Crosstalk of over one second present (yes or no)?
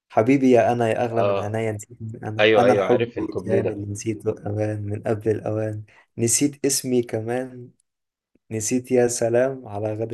yes